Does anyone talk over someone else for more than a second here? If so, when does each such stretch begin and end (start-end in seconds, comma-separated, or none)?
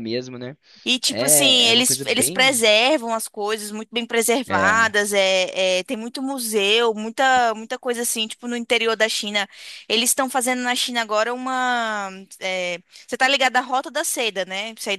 1.1-2.6